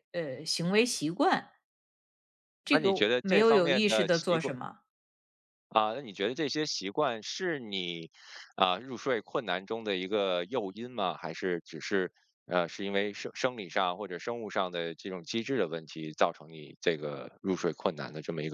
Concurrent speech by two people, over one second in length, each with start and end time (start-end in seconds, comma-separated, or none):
2.7-4.5